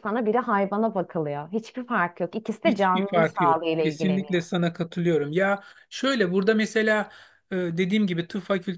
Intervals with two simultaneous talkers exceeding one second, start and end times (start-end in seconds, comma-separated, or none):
2.6-4.4